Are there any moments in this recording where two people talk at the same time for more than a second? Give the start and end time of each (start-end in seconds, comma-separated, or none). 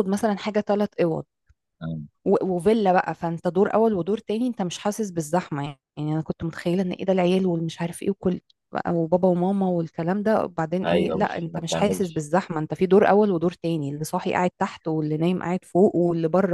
10.8-12.2